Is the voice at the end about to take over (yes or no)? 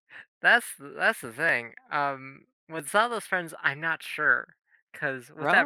no